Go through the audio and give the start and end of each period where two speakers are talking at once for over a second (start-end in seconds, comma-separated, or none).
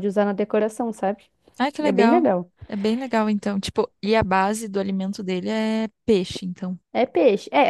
none